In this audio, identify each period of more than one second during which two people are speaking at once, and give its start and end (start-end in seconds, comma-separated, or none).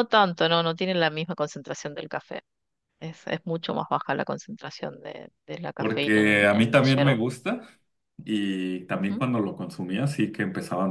5.8-7.2